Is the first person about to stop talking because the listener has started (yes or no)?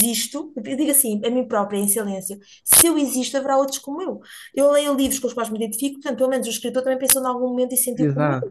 yes